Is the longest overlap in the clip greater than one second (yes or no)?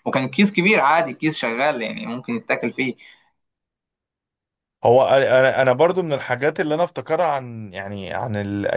no